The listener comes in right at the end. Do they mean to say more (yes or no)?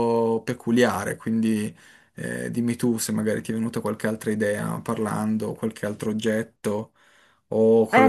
yes